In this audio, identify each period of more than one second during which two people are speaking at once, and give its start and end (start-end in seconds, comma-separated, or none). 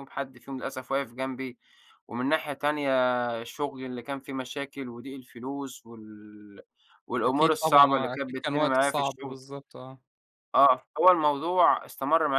7.3-9.4